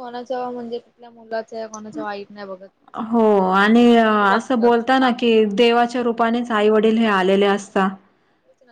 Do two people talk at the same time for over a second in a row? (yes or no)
yes